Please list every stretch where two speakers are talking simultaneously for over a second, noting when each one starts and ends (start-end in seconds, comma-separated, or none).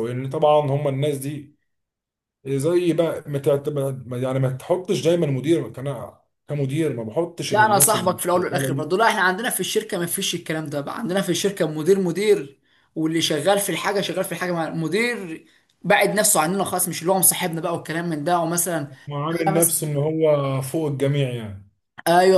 7.5-8.9